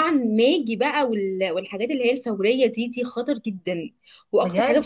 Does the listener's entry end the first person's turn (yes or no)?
no